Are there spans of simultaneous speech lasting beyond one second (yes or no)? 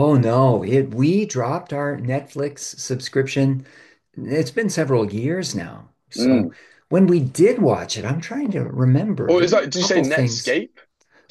yes